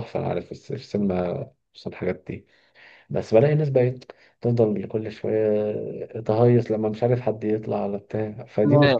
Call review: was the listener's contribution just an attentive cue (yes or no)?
no